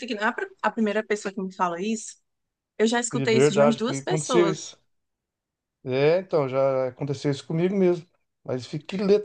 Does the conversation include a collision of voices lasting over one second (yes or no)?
yes